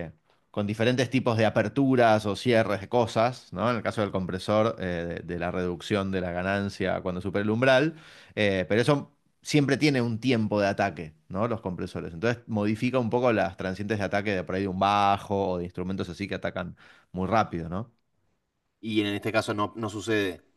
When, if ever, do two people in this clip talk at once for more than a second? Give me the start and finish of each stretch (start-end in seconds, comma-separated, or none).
none